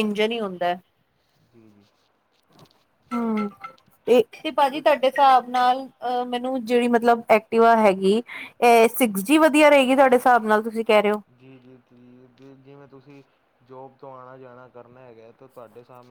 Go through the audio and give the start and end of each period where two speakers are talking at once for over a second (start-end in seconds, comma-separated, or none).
none